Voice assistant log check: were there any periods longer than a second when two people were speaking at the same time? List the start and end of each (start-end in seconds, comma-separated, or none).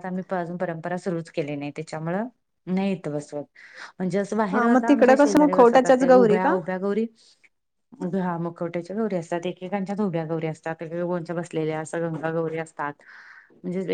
4.5-6.5